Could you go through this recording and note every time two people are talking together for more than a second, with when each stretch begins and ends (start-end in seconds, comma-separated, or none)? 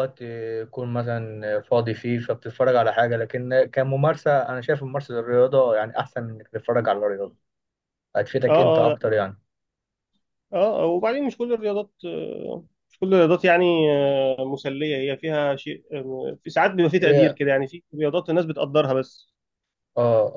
none